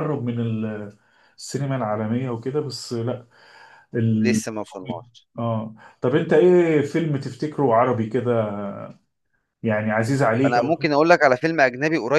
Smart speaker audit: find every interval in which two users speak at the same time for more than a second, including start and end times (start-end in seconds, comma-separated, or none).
none